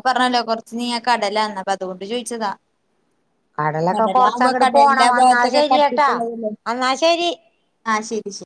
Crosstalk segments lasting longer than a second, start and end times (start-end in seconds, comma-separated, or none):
4.0-6.1